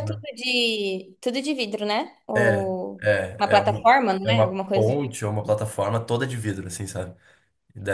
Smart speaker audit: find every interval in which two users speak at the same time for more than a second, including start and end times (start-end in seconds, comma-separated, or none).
2.4-5.2